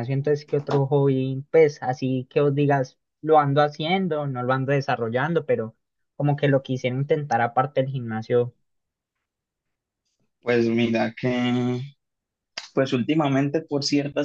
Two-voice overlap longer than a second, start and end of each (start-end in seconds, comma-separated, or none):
none